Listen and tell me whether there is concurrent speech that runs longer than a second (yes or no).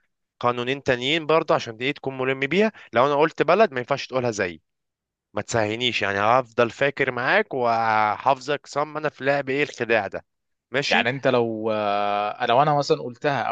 no